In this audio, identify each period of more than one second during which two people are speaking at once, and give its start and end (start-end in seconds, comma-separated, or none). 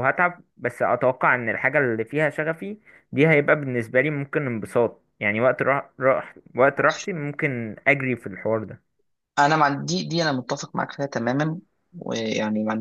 none